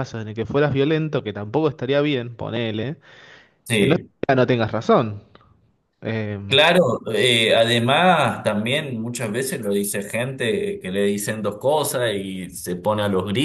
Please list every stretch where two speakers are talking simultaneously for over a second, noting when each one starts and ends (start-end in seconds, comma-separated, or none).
none